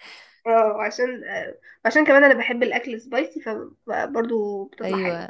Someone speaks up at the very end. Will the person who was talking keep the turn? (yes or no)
no